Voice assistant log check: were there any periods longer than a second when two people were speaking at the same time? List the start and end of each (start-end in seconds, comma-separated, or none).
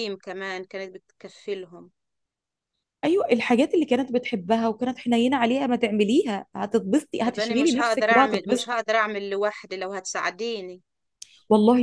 7.2-8.7